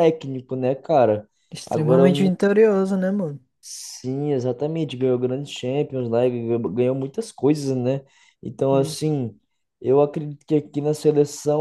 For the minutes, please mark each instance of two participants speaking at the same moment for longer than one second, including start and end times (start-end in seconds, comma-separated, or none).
none